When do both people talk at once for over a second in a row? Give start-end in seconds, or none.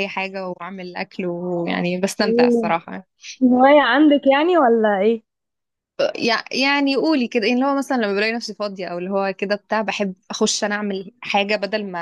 none